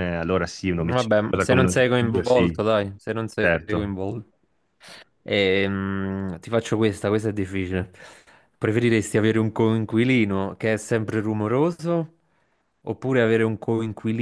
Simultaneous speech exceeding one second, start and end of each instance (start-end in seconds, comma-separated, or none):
0.8-2.6